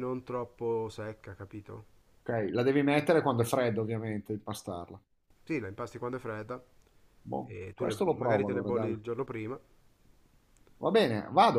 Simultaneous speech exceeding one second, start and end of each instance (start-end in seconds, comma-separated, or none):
7.5-8.9